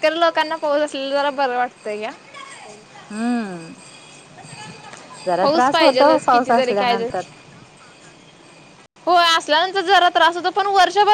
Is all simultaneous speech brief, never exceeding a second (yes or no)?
no